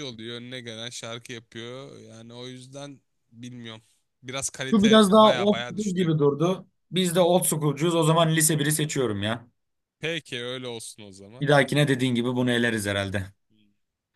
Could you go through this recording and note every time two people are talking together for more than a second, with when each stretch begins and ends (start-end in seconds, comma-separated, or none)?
4.7-6.1